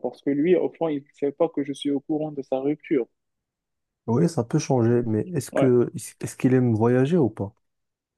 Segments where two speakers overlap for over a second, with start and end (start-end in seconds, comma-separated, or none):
none